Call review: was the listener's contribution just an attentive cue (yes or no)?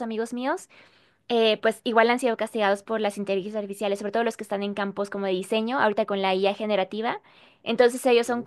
yes